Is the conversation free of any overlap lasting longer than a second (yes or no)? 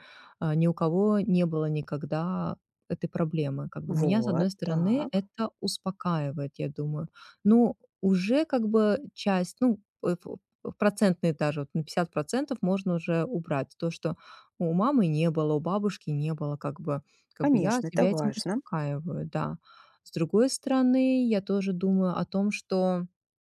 no